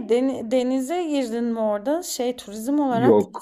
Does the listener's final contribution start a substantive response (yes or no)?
yes